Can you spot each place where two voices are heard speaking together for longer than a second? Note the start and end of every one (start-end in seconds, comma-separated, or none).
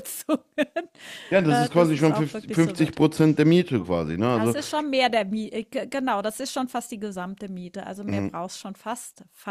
1.5-3.0